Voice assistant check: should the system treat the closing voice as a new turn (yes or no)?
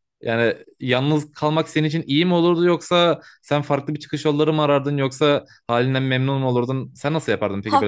yes